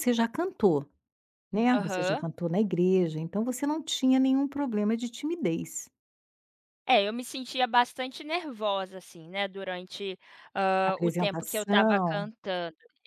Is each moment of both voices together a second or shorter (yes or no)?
no